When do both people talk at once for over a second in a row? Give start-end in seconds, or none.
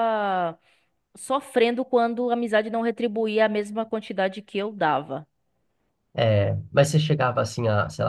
none